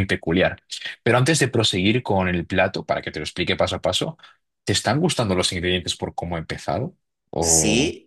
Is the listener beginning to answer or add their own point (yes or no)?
yes